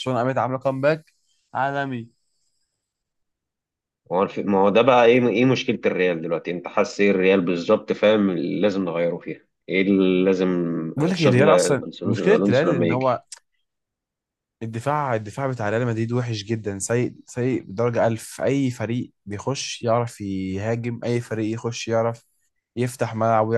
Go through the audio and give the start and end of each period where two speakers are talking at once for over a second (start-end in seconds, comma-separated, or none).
11.1-13.2